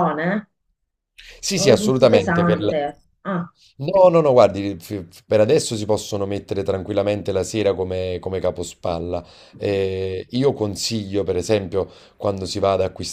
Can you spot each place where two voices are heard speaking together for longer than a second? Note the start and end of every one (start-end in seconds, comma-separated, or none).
1.5-2.7